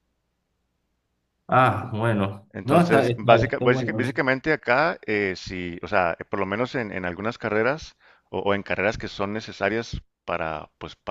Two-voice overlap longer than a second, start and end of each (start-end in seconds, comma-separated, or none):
2.5-4.2